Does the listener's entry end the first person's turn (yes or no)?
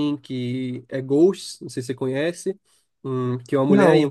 no